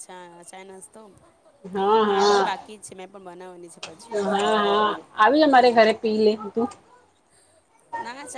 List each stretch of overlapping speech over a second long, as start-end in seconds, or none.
none